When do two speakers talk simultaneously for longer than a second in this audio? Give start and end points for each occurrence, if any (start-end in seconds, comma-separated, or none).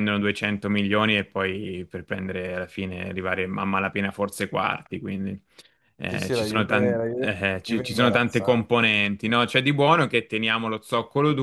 6.0-8.6